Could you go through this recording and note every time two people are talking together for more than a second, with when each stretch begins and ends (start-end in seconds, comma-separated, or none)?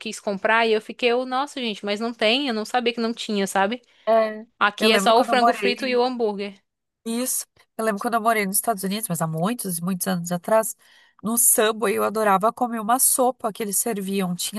4.6-6.0